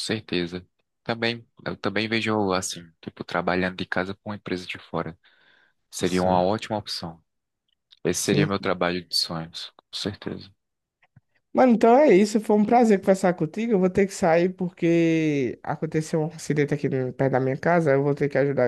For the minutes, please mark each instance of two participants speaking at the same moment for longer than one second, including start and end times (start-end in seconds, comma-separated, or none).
none